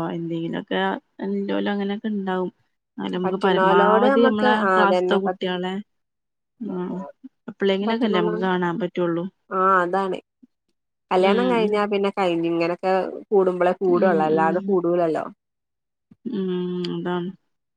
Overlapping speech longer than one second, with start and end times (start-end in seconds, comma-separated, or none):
3.2-5.5